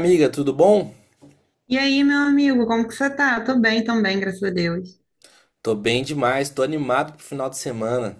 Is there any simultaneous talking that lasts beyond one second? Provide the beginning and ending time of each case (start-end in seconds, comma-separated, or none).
none